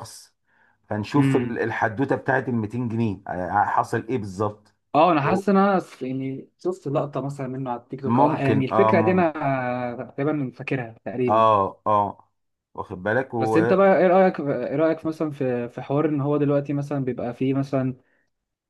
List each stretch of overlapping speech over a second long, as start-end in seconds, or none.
8.0-9.3